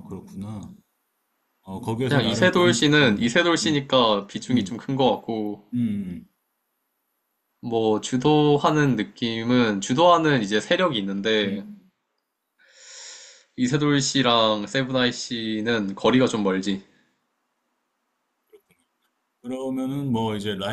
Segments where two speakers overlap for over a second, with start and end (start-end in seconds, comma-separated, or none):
2.0-3.8